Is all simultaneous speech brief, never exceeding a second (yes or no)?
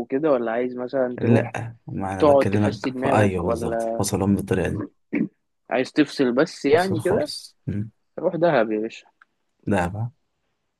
no